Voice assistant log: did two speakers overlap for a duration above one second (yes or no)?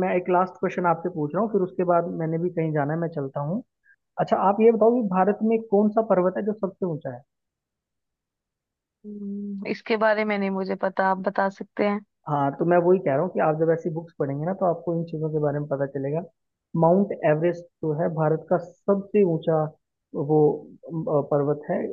no